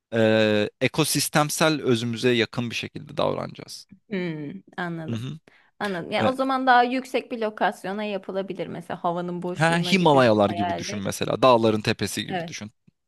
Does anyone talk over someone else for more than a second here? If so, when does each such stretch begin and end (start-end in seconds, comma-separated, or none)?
9.6-11.1